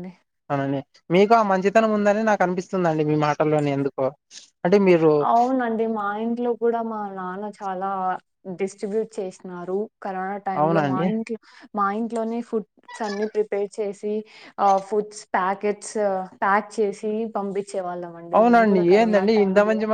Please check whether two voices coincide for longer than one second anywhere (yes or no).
no